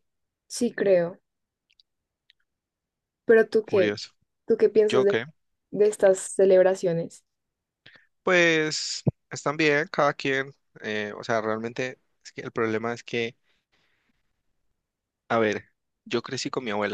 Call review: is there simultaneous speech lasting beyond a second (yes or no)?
no